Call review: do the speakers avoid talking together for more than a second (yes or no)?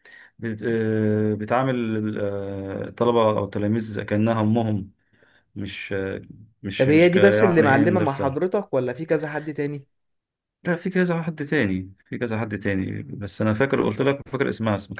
no